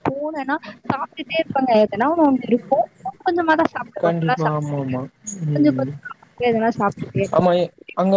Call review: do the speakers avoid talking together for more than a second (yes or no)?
yes